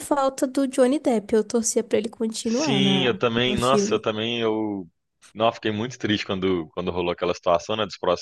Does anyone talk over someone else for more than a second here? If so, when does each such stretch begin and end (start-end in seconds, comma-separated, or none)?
2.4-4.0